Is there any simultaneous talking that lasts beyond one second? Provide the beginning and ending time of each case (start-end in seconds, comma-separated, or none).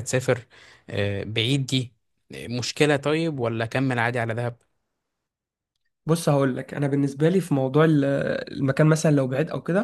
none